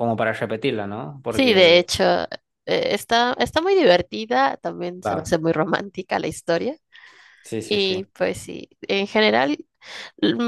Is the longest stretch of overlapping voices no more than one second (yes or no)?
yes